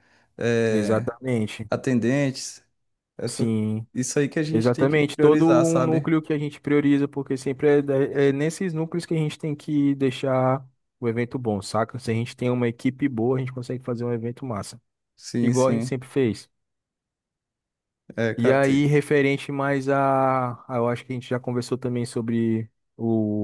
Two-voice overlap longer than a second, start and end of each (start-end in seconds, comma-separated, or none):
4.5-6.1